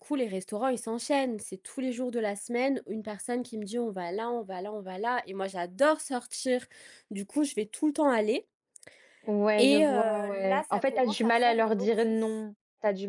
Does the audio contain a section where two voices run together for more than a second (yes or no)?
yes